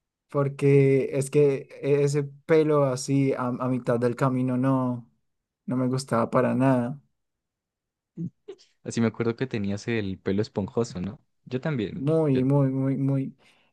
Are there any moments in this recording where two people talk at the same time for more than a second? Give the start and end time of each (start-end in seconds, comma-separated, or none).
none